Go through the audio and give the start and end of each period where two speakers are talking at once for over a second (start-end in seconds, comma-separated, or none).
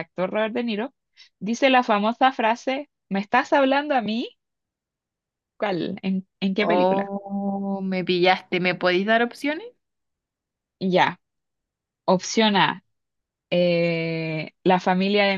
none